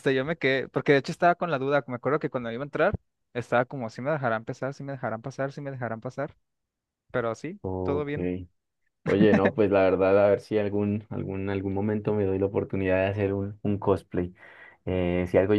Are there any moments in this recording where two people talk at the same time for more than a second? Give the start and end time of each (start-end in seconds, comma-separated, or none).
none